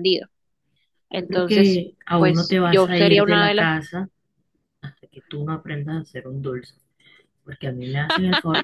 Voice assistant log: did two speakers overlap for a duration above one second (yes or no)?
yes